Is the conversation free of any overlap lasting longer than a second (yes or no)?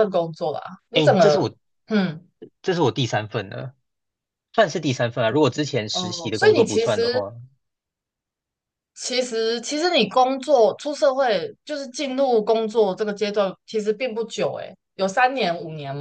no